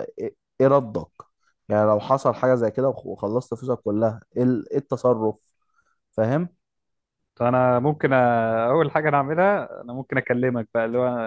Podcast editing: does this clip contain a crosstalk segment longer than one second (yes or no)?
no